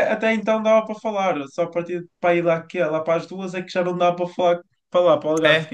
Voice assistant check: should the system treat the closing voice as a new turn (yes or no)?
yes